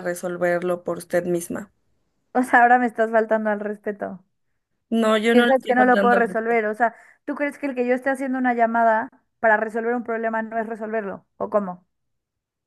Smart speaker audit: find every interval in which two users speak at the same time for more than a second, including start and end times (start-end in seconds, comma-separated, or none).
5.3-6.6